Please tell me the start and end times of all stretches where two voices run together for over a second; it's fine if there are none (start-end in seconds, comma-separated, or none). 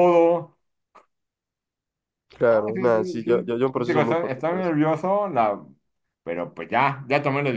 2.5-4.7